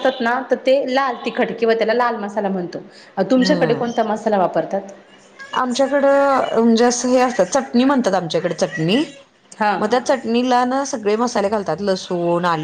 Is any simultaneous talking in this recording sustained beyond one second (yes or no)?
no